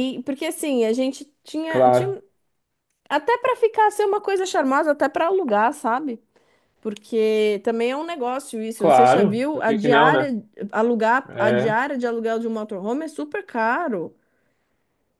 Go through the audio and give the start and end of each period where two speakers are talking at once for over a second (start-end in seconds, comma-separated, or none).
8.8-10.3